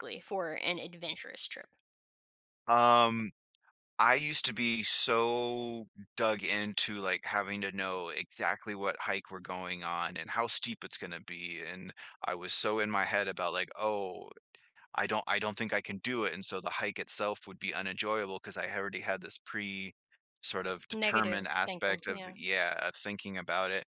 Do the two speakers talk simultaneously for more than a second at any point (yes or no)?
yes